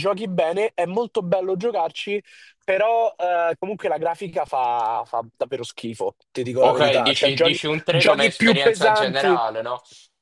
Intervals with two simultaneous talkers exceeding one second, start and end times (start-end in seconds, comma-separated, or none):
6.6-9.4